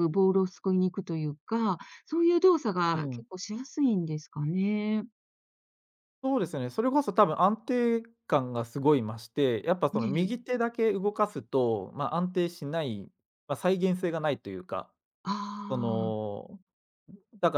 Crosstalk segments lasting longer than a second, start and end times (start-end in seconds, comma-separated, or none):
none